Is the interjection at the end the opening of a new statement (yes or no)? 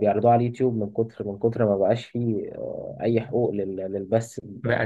yes